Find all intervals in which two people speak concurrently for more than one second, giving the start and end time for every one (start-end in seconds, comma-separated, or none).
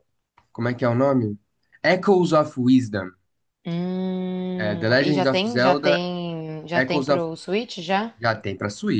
4.6-6.1